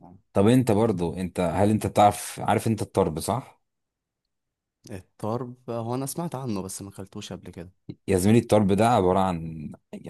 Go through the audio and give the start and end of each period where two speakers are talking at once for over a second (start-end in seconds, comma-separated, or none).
none